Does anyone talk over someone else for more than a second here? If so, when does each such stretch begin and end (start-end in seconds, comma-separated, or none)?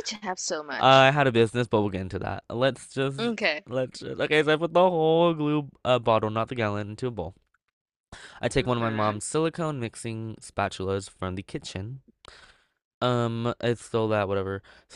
none